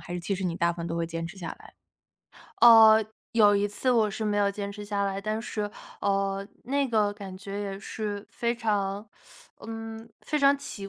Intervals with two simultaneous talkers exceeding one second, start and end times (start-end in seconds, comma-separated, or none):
none